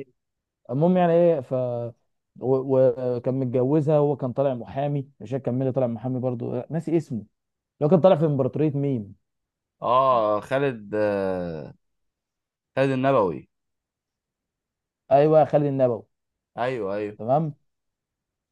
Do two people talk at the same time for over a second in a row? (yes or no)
no